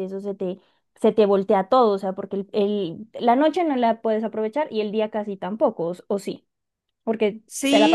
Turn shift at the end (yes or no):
yes